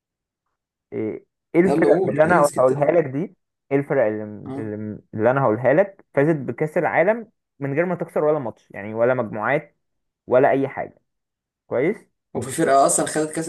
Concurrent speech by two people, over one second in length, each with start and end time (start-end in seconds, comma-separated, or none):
1.6-3.0